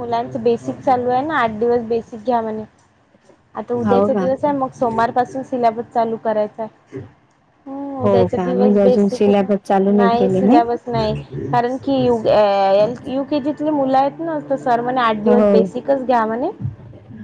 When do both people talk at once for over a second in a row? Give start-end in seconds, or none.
8.0-10.4